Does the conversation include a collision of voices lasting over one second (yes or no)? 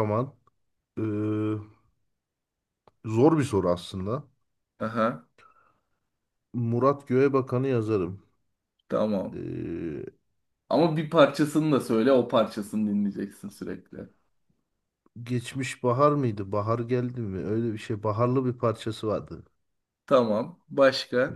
no